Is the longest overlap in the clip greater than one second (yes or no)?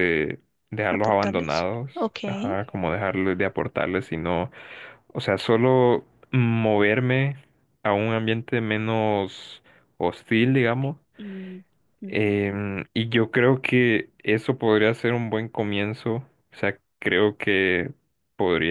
yes